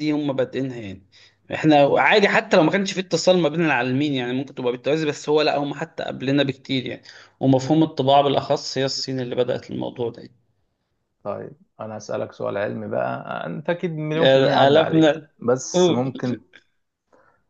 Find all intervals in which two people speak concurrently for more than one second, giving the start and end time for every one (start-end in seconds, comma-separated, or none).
none